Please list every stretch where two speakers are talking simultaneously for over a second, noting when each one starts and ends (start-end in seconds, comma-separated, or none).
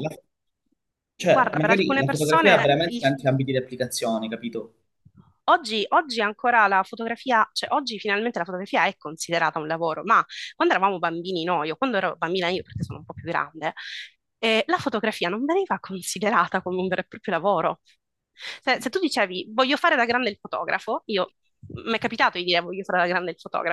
1.2-3.0